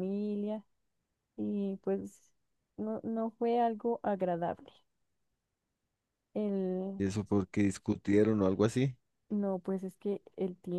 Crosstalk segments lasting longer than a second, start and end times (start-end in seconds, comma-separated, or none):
none